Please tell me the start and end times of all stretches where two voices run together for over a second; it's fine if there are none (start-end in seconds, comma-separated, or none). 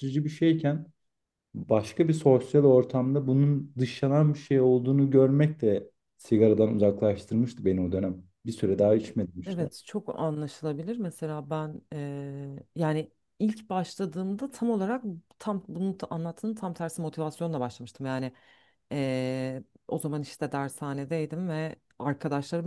none